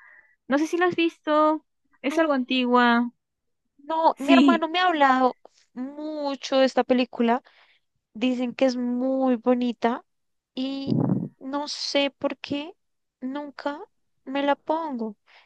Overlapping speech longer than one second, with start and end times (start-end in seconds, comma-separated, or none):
none